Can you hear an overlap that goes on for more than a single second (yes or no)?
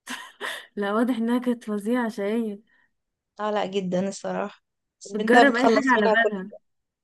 yes